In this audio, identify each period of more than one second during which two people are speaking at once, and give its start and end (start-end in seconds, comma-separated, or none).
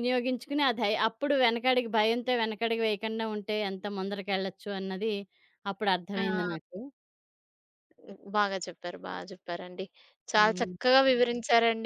none